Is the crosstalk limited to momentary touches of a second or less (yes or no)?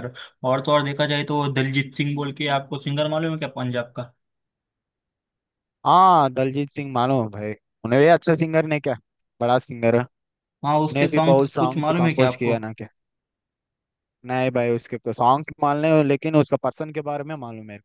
no